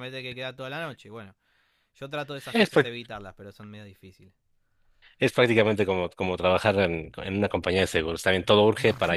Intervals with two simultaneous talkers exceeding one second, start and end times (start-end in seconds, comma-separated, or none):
none